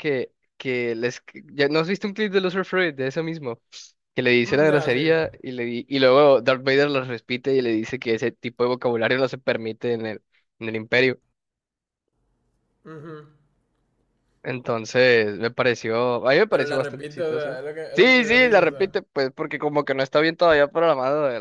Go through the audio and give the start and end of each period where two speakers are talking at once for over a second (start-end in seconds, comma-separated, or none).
16.5-19.0